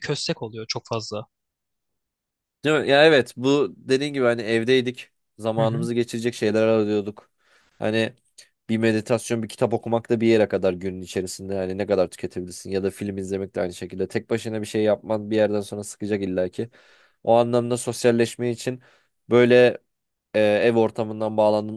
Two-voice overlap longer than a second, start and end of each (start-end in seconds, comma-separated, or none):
none